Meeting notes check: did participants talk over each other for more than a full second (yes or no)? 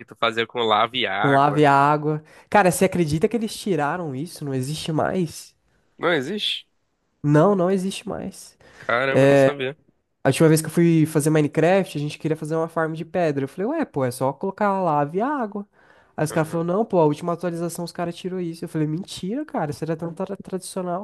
no